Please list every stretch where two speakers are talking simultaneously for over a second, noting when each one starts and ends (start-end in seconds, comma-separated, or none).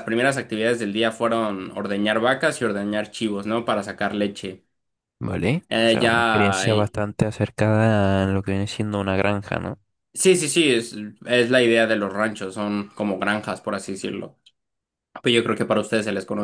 5.7-7.0